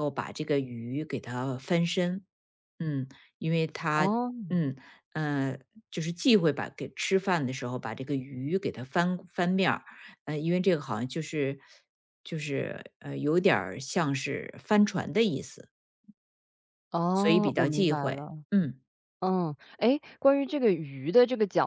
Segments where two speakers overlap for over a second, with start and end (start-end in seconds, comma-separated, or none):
17.1-18.4